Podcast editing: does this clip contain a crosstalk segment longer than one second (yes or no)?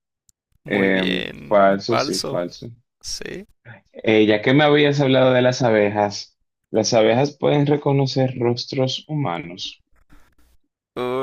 yes